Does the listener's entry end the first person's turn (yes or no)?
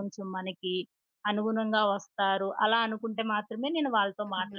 yes